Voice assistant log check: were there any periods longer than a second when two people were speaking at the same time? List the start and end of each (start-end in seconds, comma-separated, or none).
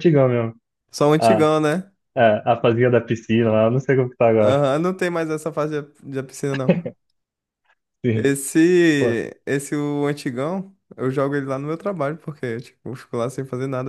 none